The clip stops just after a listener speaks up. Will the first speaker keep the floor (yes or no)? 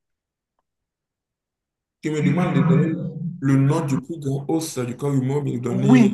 no